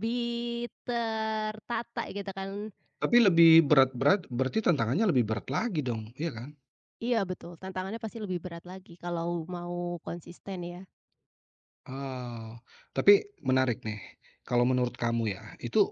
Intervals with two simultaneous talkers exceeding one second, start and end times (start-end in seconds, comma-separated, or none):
none